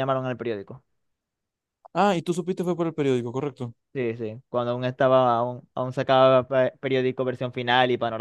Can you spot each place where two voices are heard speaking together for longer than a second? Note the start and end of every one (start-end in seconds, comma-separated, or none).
none